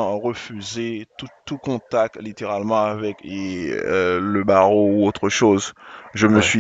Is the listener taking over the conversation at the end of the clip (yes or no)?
no